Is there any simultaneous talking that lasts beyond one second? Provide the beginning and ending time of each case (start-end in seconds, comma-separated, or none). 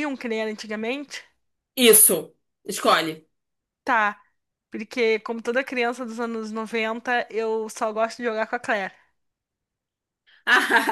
none